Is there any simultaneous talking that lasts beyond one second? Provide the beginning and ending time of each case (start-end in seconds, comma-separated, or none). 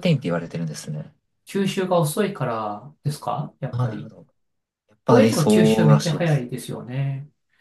5.1-6.5